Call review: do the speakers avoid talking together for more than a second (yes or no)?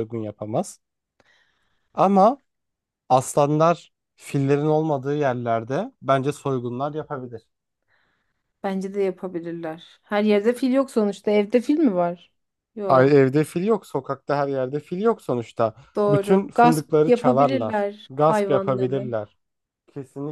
no